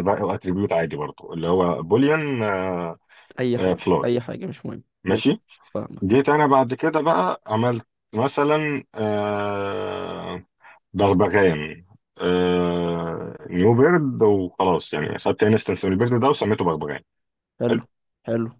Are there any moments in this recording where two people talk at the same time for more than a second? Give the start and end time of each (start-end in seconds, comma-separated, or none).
none